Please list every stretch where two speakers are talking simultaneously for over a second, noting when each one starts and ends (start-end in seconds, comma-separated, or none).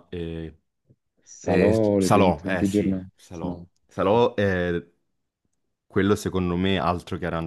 1.4-3.7